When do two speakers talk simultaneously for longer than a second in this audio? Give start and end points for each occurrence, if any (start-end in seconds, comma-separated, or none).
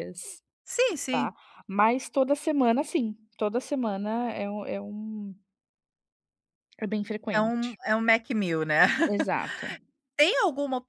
none